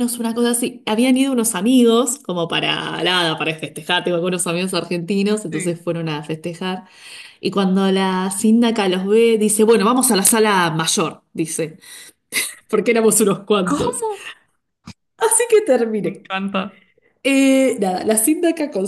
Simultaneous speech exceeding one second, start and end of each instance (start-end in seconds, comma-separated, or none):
none